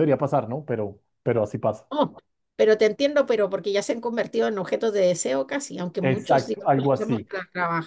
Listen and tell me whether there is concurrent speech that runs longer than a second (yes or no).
yes